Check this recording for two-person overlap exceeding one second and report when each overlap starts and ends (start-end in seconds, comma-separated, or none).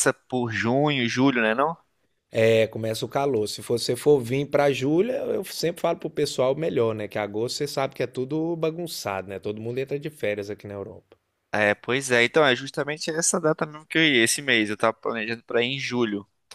none